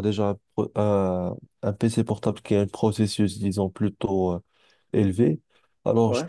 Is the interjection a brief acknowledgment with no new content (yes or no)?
yes